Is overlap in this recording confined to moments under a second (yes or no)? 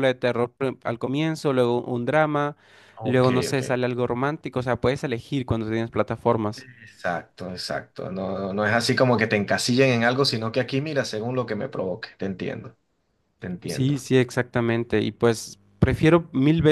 yes